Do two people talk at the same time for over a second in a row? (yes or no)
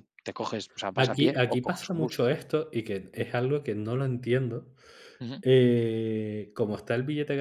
yes